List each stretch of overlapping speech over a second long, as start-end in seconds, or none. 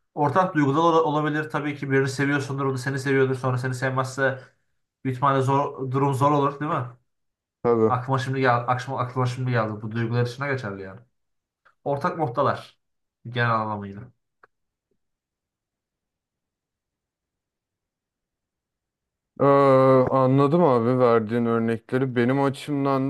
none